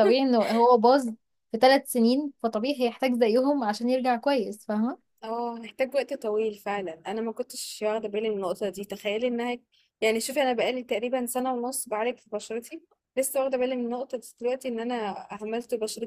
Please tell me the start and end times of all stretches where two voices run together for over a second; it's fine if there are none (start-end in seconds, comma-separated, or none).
none